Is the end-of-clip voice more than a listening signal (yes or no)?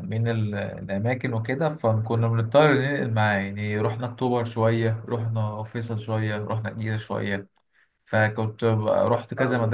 no